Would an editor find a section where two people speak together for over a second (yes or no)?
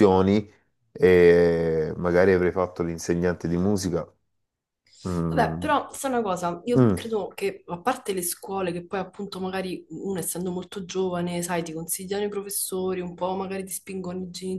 no